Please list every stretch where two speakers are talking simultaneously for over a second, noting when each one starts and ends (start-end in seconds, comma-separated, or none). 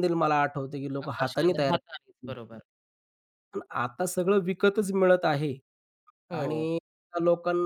1.1-2.4